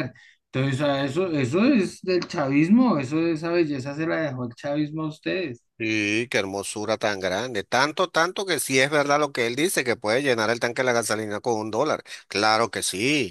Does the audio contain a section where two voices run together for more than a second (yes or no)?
no